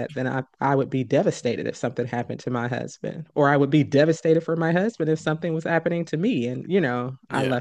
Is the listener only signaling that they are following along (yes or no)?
yes